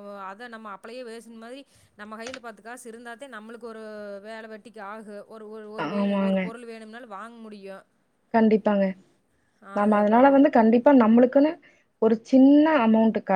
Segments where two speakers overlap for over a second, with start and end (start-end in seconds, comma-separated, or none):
none